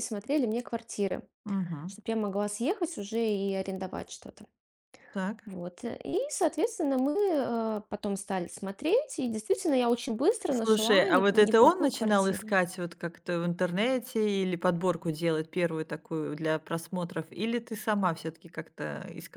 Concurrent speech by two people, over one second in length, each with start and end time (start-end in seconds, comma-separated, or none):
10.5-12.5